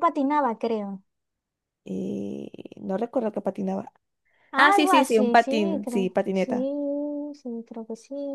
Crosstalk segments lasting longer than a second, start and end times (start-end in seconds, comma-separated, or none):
4.6-6.5